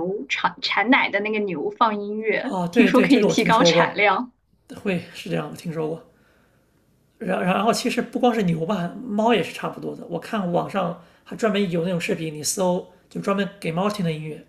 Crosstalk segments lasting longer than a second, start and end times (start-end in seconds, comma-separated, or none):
2.4-4.0